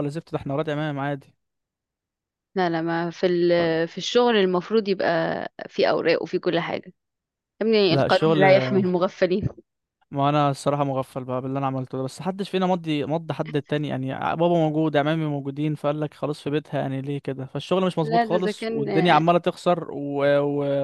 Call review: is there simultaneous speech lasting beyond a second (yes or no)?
yes